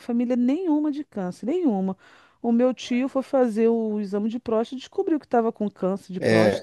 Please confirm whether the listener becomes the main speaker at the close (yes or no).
yes